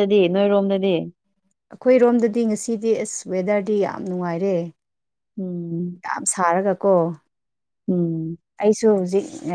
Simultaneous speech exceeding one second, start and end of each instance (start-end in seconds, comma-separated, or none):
none